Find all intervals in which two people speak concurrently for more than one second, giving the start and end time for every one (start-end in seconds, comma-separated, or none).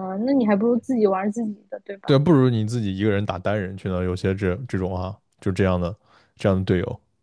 none